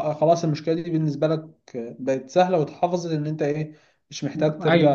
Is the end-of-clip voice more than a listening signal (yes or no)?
yes